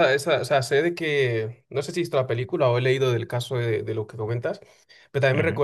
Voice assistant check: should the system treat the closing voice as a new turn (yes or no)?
no